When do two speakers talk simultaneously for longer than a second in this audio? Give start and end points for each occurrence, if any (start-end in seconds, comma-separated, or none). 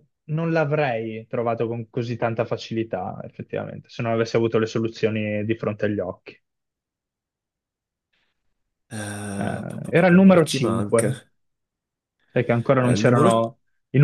9.4-11.1